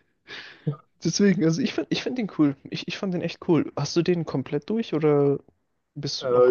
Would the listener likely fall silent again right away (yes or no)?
no